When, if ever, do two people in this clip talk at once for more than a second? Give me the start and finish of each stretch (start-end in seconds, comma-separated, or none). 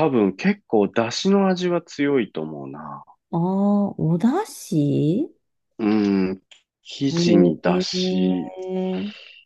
7.2-8.5